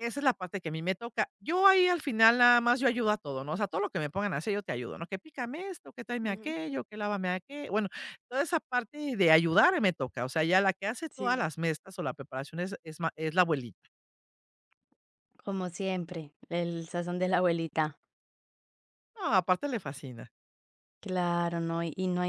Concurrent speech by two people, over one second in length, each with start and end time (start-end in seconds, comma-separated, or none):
none